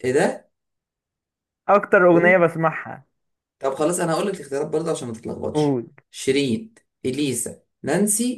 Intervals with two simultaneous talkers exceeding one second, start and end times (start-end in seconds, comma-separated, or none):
none